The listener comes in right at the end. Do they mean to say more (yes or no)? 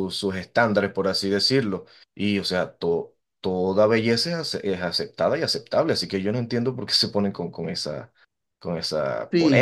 yes